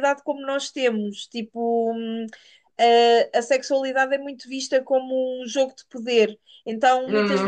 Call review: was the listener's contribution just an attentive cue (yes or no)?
yes